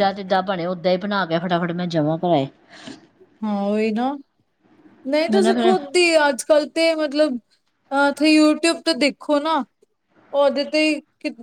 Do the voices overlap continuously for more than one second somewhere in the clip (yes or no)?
no